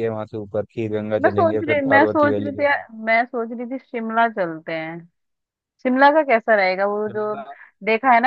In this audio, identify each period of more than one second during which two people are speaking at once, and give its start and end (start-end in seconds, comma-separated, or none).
1.2-2.8